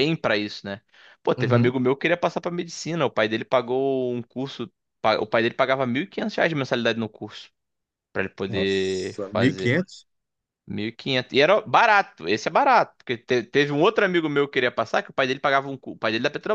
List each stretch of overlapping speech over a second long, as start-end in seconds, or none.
8.5-9.8